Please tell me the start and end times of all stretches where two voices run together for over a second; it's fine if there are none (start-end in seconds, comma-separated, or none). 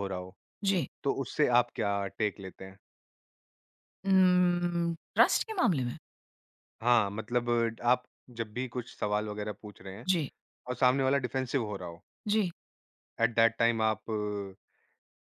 none